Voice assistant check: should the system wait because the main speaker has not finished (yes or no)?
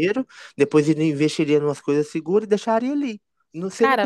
yes